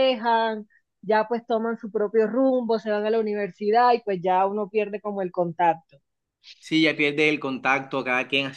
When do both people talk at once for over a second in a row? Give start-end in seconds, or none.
none